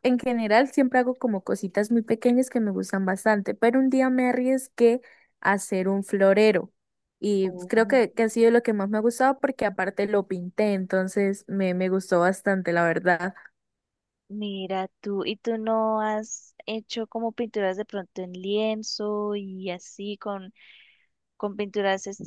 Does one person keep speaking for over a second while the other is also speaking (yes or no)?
no